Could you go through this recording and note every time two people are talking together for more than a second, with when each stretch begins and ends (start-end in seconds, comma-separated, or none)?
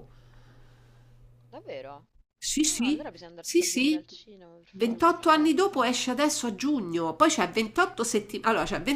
2.6-4.0